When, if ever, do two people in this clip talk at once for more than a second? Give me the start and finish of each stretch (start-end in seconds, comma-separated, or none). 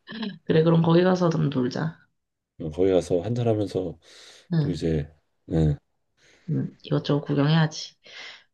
none